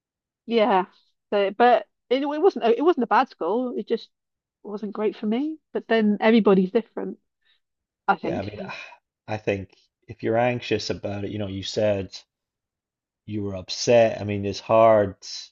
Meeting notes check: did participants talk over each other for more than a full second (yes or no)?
no